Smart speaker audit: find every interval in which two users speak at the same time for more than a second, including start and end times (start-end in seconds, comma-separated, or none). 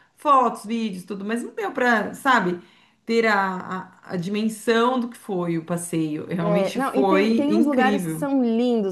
6.4-8.3